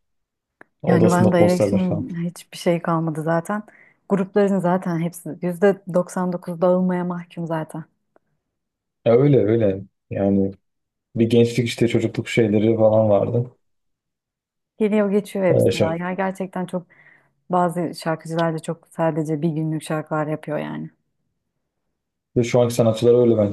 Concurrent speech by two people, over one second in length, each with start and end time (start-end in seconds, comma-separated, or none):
0.9-2.1